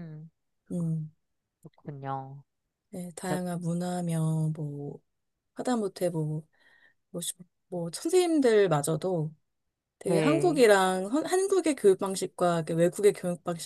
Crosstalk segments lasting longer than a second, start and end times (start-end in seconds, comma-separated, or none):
none